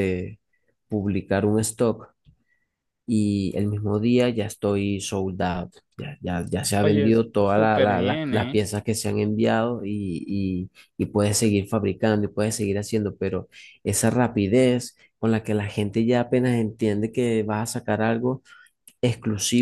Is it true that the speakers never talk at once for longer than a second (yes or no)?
no